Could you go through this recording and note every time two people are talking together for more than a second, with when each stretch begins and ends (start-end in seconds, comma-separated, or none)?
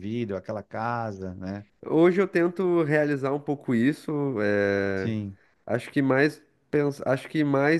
none